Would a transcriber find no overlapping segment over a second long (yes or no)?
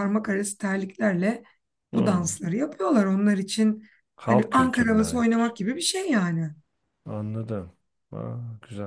no